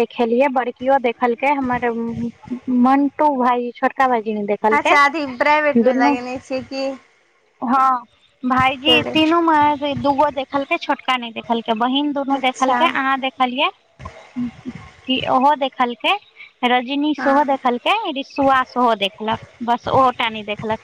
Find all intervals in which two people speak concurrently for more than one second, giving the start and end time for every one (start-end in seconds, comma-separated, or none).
none